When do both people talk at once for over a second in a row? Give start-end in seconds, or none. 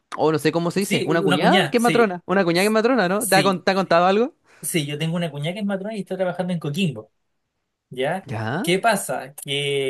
0.8-2.1